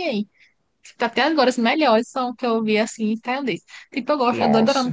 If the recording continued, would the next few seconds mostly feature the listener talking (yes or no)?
no